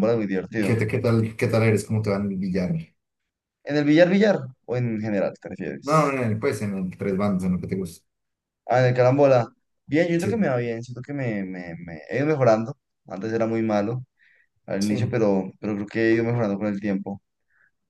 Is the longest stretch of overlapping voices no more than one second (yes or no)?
yes